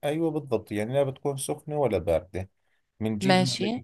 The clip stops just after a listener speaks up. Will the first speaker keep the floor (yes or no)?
yes